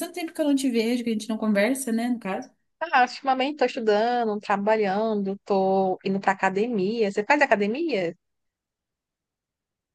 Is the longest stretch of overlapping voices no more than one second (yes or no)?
yes